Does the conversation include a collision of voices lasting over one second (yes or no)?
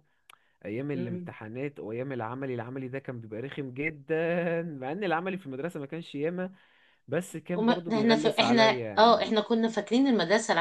yes